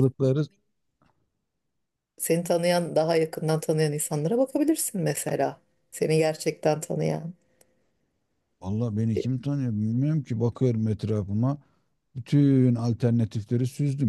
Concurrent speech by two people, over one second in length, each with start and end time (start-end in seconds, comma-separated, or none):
none